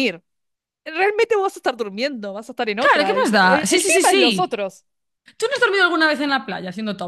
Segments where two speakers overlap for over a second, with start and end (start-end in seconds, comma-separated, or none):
2.8-4.7